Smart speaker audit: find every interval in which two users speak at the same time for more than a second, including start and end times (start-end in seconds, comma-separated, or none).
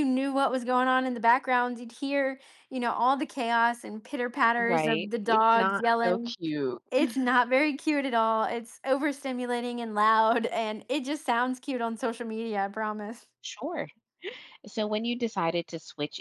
4.6-6.3